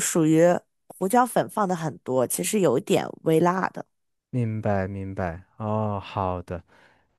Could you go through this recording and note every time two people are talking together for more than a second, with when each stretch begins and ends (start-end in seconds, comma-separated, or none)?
none